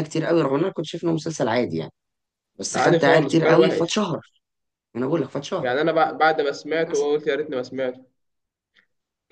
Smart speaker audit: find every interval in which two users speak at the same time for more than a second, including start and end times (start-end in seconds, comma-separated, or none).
2.8-4.0